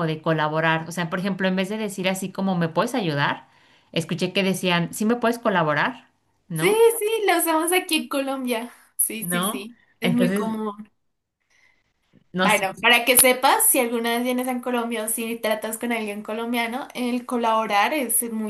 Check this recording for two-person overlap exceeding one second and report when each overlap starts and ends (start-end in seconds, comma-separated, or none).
9.2-10.6